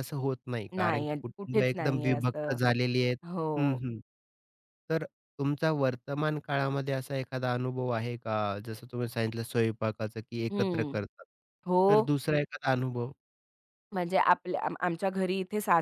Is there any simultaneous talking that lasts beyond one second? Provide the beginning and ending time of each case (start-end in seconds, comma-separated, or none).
0.8-2.6